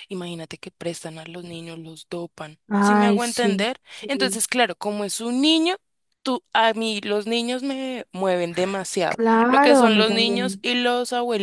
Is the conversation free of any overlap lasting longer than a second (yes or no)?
no